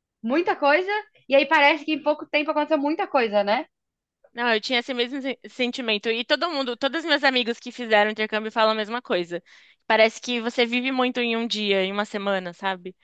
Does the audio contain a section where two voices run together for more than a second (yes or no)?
no